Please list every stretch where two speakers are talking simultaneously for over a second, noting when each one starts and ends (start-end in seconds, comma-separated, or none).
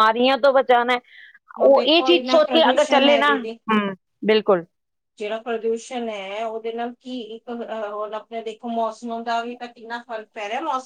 1.7-3.6